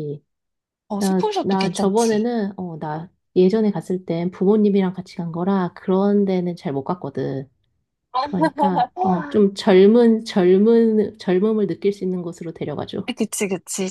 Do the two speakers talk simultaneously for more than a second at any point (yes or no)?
yes